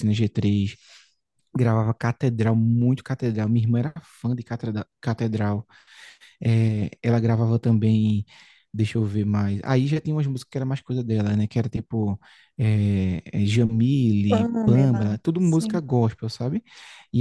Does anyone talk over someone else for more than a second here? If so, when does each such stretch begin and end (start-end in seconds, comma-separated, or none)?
14.3-15.8